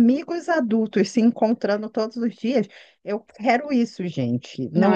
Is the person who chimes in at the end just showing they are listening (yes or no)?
no